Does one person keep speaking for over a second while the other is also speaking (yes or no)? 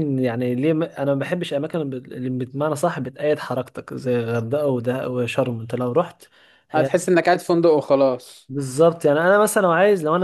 no